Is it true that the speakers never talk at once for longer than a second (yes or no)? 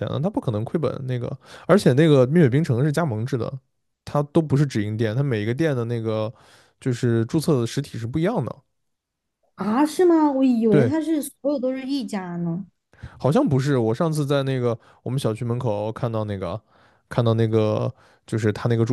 yes